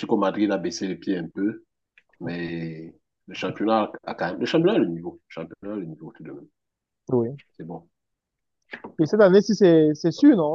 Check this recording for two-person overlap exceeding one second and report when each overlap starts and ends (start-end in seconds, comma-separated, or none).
none